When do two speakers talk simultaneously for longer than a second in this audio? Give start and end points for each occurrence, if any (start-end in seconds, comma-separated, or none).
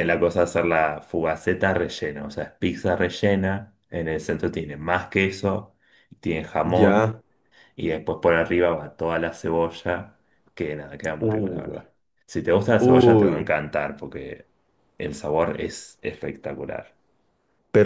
none